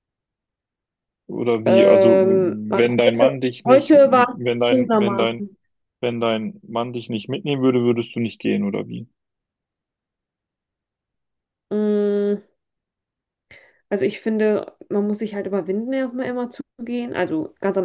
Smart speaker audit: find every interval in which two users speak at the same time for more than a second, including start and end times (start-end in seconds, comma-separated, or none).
1.6-5.4